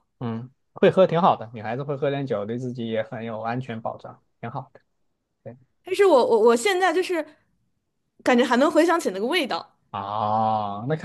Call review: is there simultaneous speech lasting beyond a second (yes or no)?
no